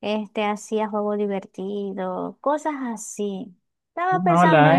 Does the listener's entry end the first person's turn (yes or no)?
yes